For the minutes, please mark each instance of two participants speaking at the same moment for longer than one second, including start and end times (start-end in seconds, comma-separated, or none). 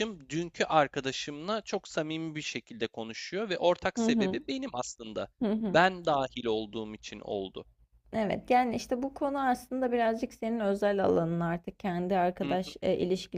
none